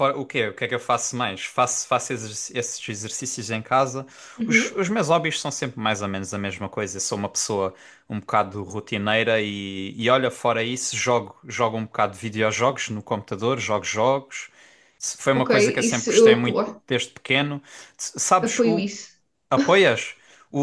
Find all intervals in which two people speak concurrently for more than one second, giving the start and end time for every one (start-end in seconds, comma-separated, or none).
15.3-16.8